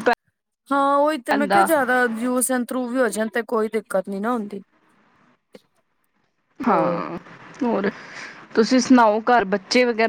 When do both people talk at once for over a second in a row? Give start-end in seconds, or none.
none